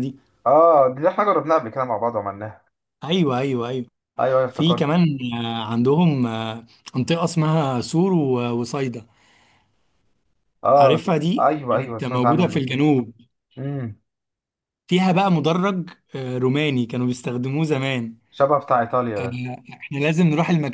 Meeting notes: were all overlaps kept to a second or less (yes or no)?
no